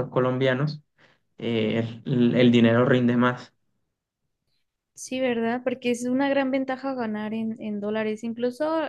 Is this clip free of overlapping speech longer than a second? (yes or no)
yes